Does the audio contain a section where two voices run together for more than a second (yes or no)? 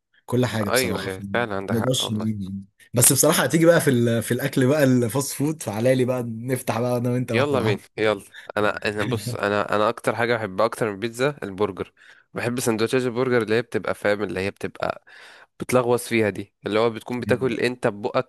yes